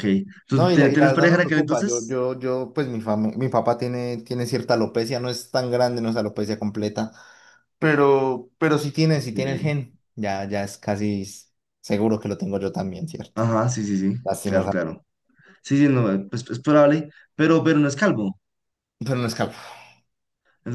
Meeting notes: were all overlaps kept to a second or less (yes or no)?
no